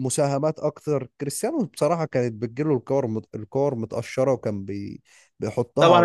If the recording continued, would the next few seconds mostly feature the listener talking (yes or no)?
yes